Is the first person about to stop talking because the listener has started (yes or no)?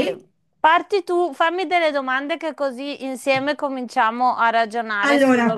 yes